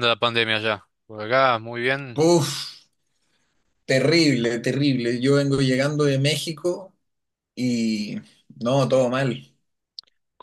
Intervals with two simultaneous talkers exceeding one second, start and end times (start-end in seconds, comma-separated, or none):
none